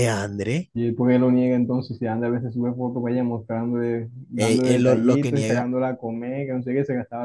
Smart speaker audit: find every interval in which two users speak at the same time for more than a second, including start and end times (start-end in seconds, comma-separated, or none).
4.4-5.7